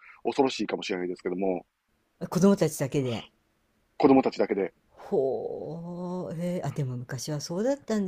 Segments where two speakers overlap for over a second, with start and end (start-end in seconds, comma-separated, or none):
none